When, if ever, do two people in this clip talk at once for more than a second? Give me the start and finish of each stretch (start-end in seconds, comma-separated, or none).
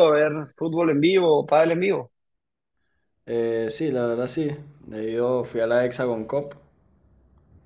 none